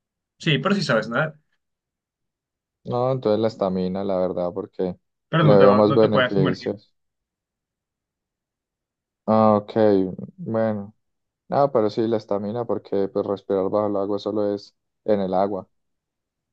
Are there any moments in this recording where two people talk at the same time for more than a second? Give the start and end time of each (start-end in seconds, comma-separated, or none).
5.4-6.7